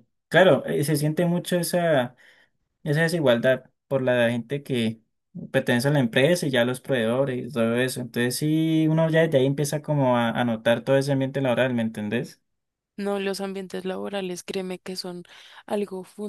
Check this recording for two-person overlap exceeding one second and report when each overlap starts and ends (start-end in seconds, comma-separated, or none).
none